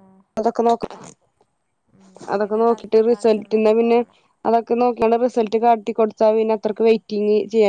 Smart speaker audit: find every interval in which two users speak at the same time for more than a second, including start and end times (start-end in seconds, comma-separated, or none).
2.4-4.0